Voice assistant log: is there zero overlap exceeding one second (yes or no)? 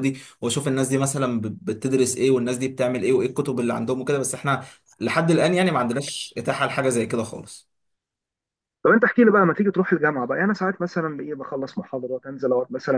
yes